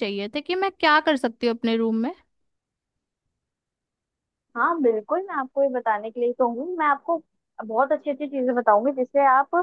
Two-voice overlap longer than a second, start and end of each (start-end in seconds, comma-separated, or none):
none